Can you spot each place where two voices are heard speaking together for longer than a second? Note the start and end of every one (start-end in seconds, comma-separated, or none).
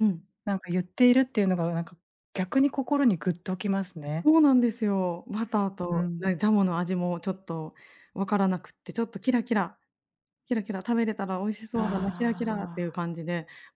11.7-13.0